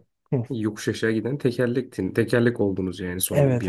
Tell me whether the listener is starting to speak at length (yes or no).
yes